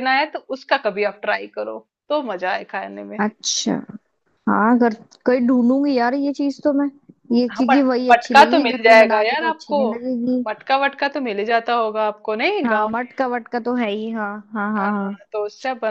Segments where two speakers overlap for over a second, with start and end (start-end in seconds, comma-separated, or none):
7.5-9.8